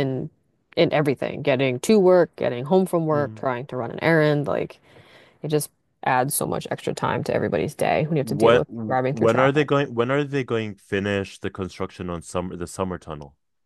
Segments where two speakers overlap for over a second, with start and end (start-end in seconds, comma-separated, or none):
8.2-9.7